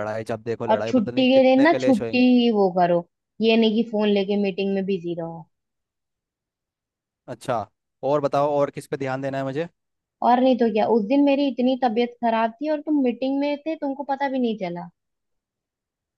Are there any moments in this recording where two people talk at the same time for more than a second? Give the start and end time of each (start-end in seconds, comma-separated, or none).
0.7-2.2